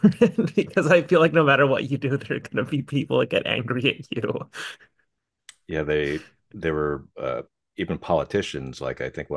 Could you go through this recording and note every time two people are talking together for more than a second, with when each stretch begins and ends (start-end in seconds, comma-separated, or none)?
none